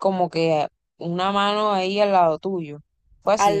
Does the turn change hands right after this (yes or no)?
yes